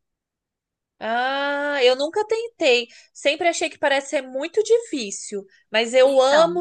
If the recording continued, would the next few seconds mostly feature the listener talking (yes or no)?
no